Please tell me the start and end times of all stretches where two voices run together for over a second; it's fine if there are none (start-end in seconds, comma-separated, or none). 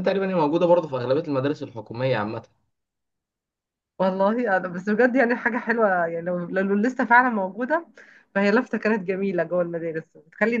none